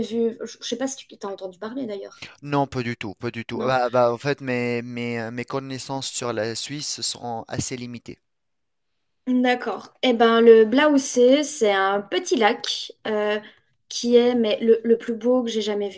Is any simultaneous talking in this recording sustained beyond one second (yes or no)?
no